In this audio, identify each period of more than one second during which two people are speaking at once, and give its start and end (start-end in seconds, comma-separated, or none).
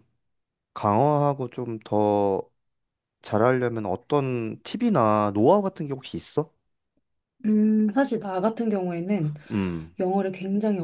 none